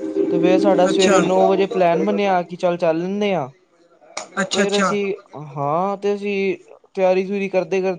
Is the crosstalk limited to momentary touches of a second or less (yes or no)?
no